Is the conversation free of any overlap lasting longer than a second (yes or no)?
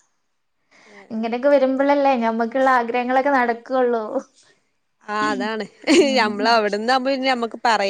yes